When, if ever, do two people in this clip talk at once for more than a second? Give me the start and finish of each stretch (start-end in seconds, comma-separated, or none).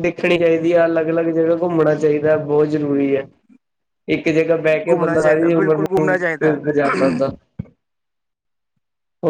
4.9-6.2